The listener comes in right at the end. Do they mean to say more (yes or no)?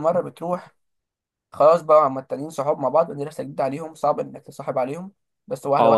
yes